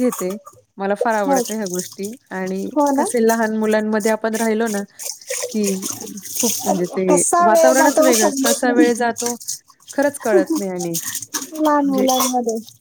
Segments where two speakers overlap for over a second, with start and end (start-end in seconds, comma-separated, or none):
6.7-8.9